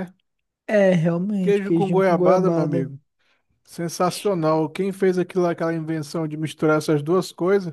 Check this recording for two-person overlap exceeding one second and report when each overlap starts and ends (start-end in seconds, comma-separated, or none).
1.4-2.9